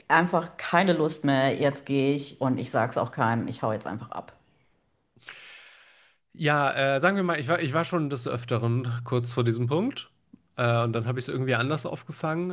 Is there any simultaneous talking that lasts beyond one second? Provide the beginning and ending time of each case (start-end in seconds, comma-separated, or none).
none